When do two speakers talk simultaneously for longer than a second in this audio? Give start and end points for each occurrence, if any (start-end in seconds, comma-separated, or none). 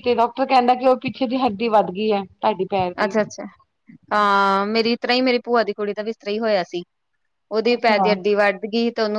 none